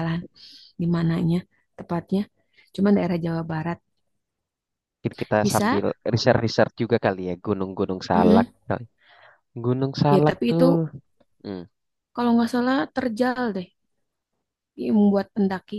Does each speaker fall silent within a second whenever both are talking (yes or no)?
yes